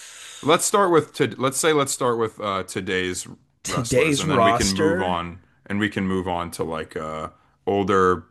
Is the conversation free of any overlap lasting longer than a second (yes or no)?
no